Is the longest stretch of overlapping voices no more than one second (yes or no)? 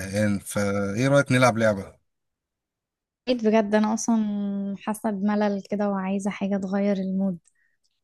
yes